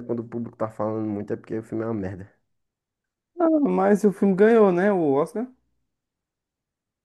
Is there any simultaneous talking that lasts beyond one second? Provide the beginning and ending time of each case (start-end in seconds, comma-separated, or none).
none